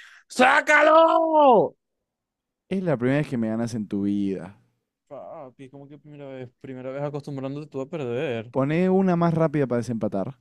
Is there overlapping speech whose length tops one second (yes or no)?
no